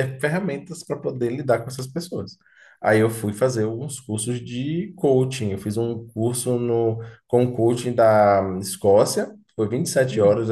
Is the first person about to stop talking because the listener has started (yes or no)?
no